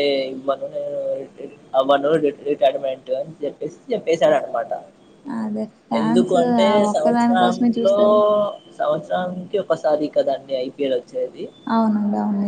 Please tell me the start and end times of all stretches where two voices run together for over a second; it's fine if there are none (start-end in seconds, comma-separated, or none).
6.0-8.0